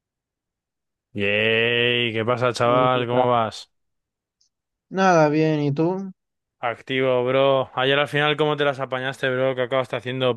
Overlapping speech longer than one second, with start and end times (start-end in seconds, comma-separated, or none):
none